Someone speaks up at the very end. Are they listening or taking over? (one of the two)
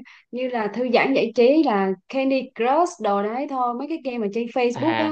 listening